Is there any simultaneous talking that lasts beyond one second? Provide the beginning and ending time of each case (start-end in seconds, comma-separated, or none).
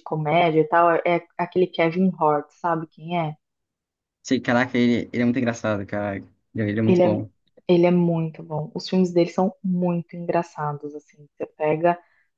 none